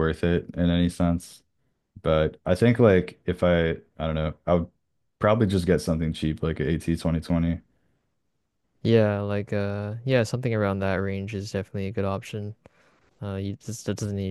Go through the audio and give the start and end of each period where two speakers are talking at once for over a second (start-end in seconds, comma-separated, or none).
none